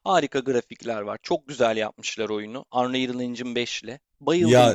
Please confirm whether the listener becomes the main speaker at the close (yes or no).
no